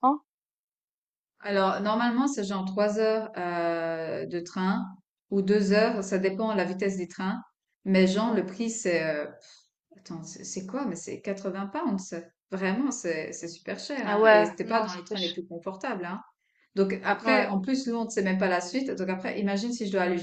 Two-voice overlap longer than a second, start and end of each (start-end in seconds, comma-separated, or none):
14.1-15.3